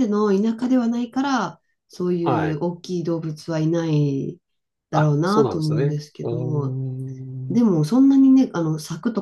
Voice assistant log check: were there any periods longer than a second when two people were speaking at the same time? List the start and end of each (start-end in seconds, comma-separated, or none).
4.9-6.8